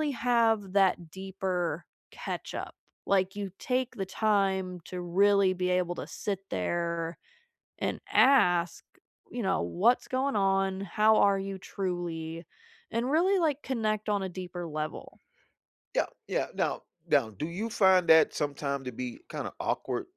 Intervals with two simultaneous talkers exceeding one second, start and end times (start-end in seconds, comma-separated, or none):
none